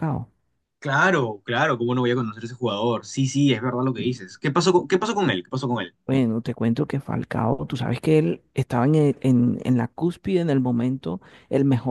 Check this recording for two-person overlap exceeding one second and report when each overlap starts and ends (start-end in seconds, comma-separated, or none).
none